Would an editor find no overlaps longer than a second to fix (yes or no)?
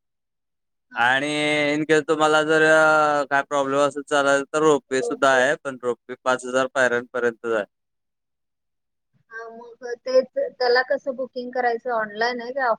yes